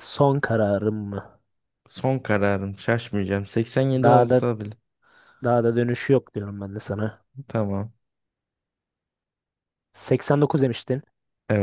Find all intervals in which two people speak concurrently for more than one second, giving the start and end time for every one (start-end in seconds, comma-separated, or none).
none